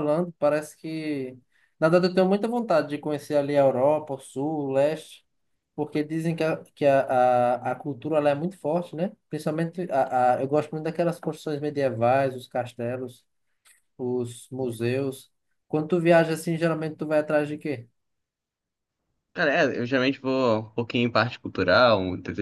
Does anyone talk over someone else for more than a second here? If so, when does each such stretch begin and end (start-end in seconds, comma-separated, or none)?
none